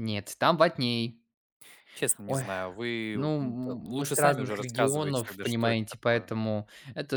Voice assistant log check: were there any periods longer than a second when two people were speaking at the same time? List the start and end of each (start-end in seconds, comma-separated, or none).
3.1-6.3